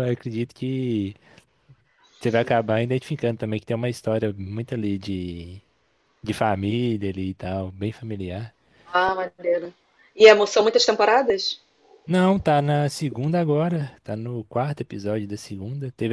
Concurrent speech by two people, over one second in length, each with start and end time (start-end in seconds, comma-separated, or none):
none